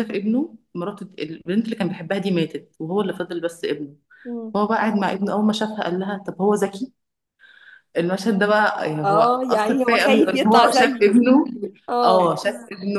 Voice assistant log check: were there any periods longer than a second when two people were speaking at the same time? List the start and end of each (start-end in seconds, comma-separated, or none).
9.0-11.1